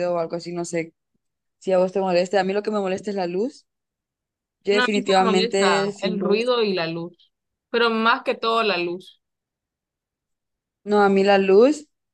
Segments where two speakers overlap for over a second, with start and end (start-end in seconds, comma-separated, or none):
4.8-6.5